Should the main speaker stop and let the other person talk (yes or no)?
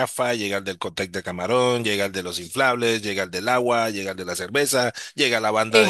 no